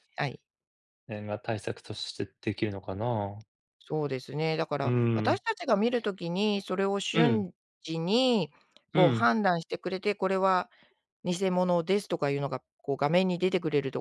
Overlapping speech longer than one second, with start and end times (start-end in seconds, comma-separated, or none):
none